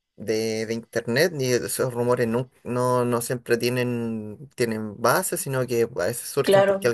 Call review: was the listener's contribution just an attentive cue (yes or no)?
yes